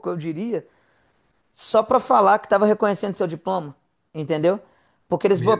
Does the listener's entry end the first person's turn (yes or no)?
no